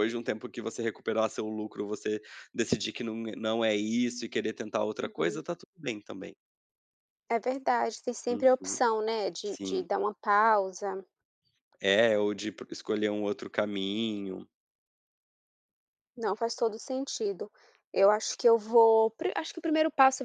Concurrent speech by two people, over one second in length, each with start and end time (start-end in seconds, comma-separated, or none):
none